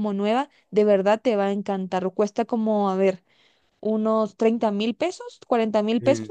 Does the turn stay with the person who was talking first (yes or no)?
no